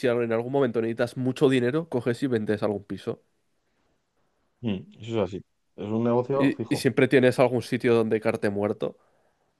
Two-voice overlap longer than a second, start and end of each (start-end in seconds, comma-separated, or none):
none